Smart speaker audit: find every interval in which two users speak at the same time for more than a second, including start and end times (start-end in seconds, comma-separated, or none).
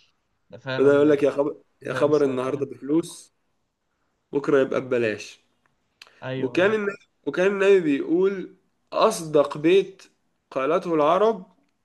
0.8-2.6